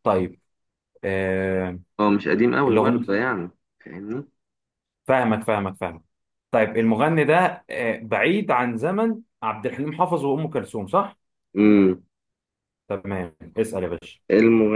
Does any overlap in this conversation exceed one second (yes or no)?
no